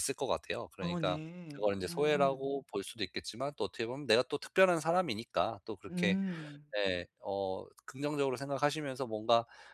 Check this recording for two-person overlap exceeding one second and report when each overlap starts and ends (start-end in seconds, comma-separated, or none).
0.8-2.5